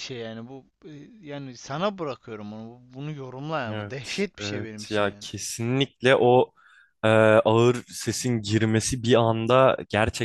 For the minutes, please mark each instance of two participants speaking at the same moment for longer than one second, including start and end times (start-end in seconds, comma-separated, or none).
3.7-5.3